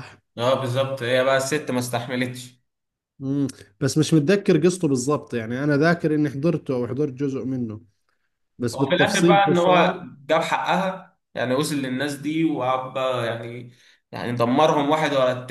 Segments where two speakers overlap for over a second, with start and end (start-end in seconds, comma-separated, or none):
8.7-9.9